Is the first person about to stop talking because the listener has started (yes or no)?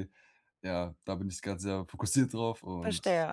yes